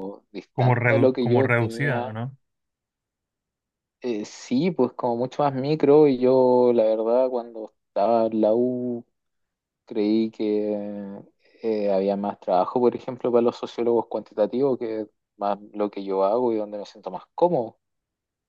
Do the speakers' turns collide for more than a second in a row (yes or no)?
yes